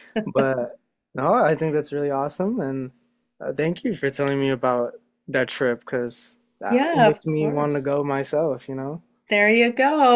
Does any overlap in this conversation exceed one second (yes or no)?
yes